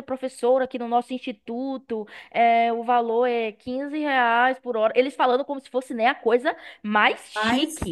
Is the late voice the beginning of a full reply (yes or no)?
no